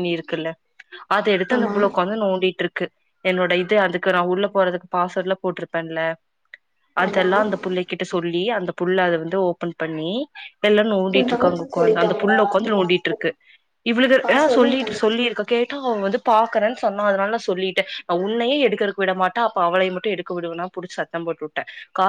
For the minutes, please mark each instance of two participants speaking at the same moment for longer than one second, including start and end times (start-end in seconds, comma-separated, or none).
11.2-13.2